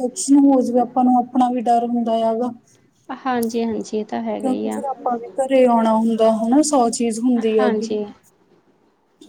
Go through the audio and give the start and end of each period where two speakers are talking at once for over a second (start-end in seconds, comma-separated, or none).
none